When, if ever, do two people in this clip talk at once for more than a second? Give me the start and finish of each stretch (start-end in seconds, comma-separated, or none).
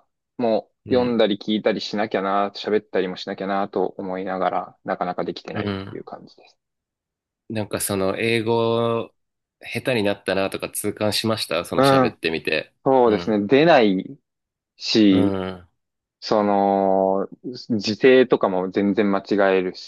none